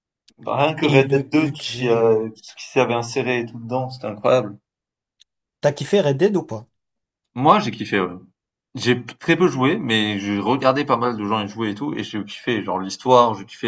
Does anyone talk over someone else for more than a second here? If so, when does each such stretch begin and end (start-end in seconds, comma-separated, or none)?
0.8-2.2